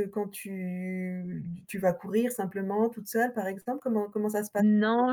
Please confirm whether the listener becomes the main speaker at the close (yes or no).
yes